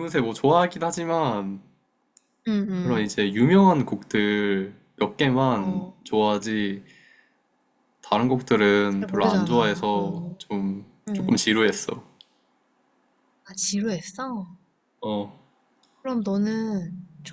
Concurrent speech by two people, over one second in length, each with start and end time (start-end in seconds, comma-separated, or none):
8.9-10.4